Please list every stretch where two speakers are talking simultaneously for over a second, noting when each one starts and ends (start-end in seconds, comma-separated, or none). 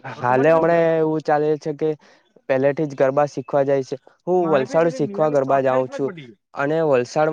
4.5-6.1